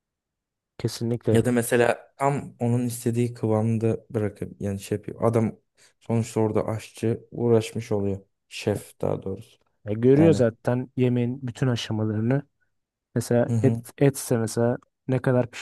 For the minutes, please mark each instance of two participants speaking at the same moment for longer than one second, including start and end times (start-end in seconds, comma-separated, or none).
none